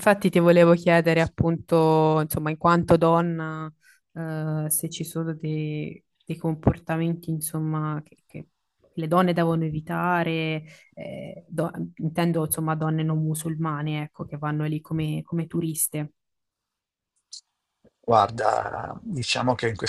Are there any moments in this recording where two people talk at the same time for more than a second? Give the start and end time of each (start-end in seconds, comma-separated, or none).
none